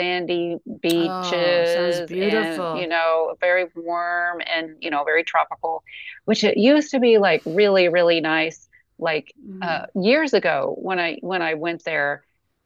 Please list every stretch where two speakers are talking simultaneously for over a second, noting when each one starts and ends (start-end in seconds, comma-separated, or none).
0.9-2.9